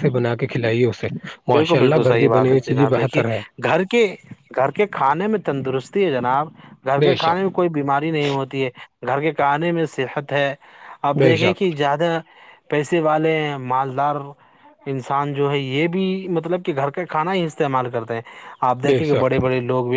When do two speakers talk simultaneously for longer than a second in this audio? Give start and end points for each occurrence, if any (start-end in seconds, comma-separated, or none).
1.5-3.2